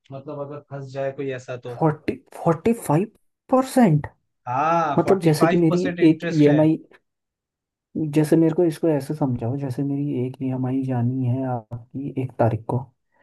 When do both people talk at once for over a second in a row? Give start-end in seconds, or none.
5.0-6.7